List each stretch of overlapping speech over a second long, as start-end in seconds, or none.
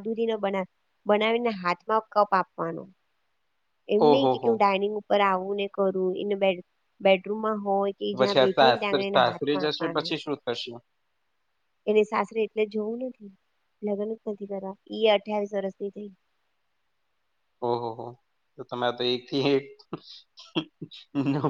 8.2-10.1